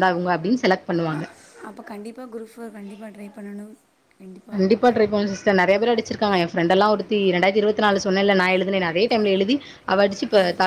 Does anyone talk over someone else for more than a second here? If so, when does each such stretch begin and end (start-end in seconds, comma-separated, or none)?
none